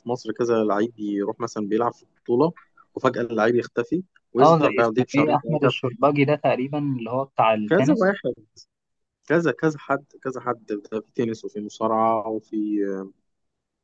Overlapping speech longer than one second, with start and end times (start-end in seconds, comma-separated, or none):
4.4-5.8